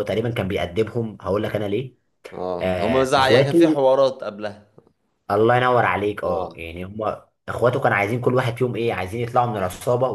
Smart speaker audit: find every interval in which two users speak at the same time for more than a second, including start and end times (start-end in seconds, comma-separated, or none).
2.6-3.8